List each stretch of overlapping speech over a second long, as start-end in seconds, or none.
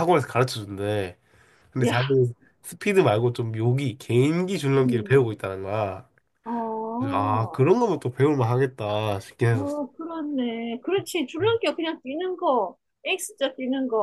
none